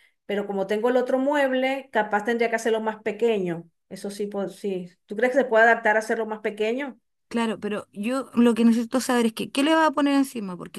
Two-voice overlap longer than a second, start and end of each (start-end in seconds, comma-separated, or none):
none